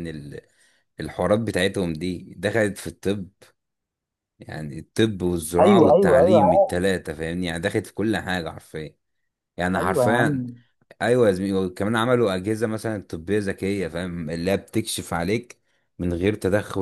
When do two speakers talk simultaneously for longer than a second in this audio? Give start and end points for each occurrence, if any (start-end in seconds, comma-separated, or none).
5.6-6.8